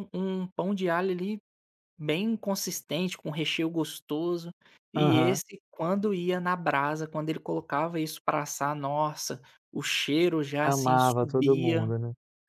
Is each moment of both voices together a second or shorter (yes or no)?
no